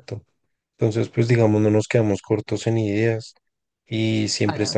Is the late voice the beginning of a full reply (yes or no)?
no